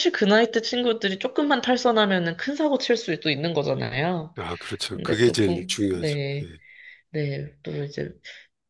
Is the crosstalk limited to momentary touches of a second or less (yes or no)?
no